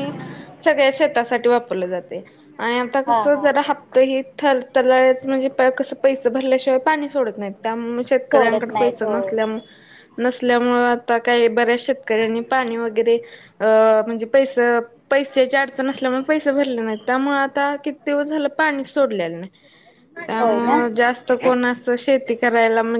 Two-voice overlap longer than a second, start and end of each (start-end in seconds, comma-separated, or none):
8.3-9.6